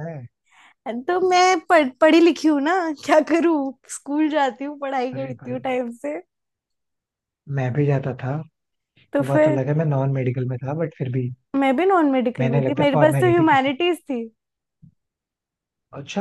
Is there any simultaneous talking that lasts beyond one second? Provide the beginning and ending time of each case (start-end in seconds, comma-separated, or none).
12.4-13.7